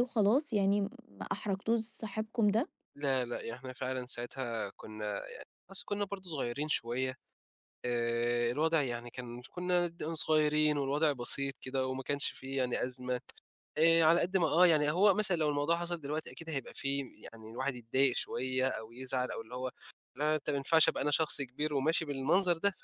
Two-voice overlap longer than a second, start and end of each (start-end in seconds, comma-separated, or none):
none